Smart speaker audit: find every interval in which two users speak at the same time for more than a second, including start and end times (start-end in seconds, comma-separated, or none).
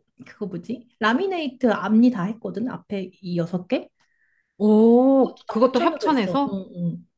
5.2-6.6